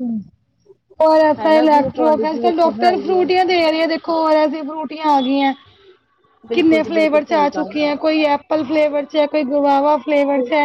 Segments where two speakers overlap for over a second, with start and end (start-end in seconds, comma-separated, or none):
1.4-3.2, 6.5-8.1